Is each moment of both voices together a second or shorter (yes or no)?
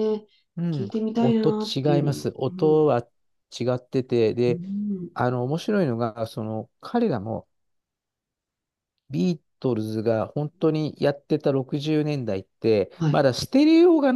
no